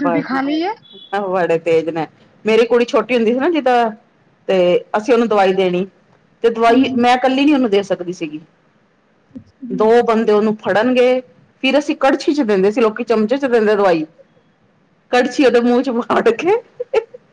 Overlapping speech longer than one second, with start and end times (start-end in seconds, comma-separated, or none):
none